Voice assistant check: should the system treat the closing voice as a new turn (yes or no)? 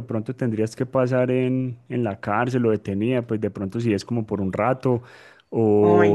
no